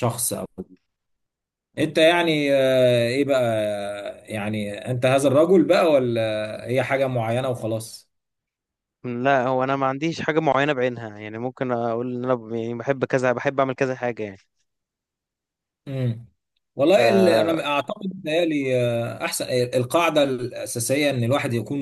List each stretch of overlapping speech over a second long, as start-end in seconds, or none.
none